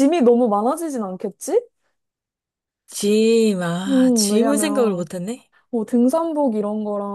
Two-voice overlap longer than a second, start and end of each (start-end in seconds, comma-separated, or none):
3.9-5.1